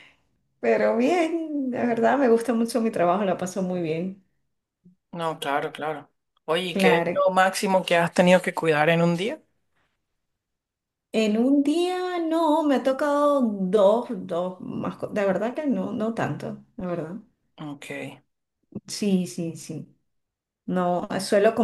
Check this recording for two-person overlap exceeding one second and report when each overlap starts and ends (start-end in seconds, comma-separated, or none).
none